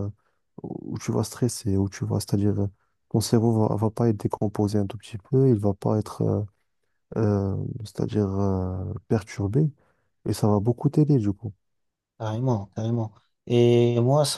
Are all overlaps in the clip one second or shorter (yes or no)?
yes